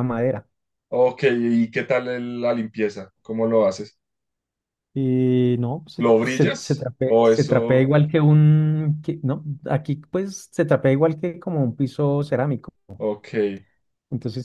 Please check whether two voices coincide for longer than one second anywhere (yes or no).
yes